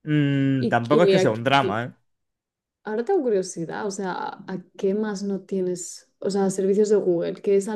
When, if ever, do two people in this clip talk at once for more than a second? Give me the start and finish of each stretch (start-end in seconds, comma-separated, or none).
0.6-1.8